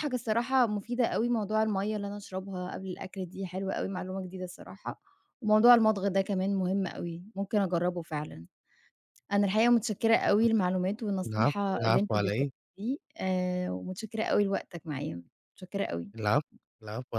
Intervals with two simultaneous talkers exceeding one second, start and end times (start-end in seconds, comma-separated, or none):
11.3-12.5